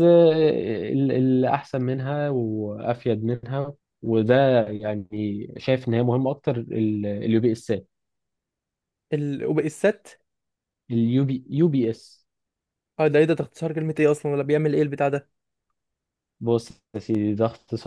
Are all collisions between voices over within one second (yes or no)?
yes